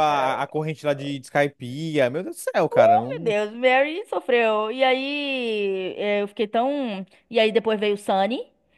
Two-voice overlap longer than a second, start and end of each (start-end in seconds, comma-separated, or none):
none